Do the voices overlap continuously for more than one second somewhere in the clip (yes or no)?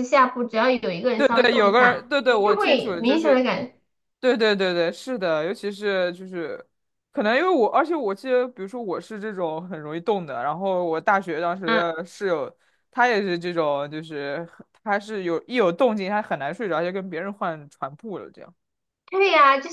yes